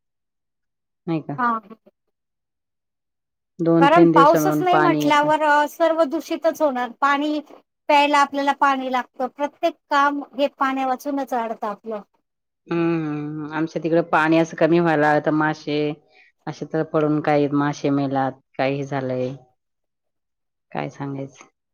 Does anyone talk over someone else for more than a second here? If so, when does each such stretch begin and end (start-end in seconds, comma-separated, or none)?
3.8-5.3